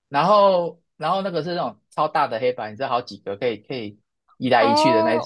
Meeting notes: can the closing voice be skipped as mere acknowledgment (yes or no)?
no